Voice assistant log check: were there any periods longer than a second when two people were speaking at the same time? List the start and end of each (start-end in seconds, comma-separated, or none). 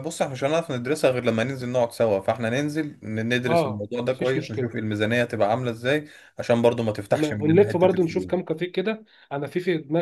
3.5-4.7, 7.1-8.5